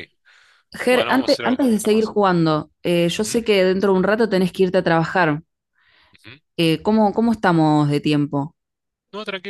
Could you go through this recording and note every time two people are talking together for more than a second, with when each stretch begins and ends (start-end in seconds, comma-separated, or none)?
0.9-2.1